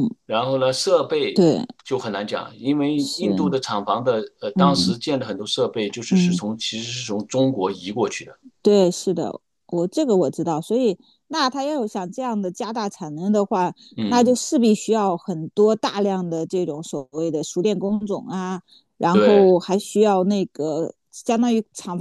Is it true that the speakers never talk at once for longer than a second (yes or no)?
yes